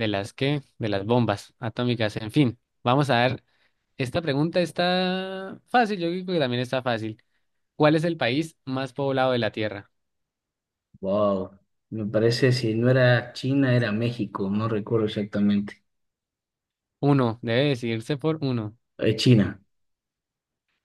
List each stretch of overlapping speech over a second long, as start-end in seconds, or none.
none